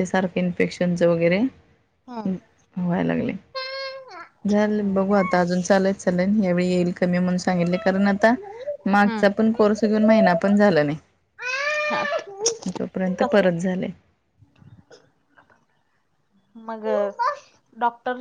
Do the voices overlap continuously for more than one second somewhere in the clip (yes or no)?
no